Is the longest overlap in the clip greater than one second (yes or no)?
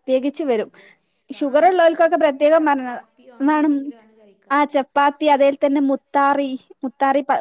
yes